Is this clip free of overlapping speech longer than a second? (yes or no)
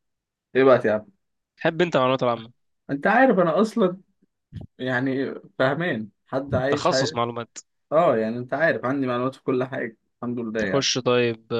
yes